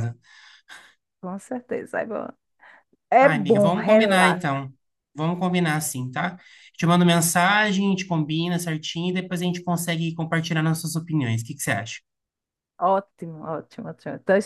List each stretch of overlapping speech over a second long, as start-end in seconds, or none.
3.2-4.5